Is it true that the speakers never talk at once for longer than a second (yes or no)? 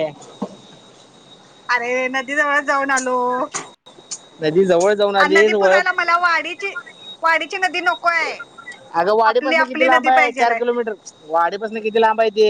yes